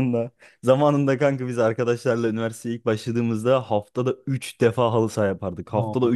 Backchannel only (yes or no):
yes